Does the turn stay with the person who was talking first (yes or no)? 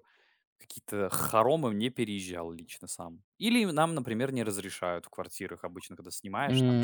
no